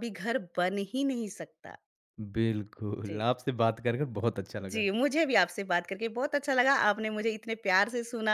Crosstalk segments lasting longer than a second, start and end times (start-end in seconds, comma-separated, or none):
none